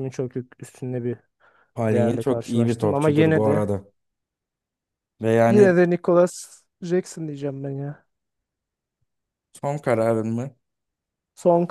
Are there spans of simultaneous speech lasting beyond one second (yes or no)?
yes